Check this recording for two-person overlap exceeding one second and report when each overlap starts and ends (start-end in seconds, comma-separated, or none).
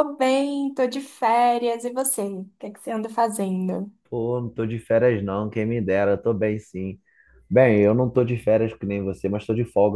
none